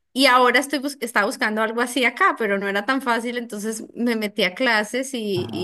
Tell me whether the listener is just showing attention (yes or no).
yes